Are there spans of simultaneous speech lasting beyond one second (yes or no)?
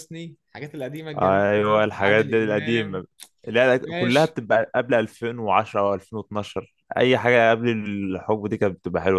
yes